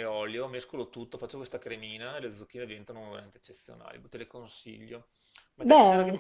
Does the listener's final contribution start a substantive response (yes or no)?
no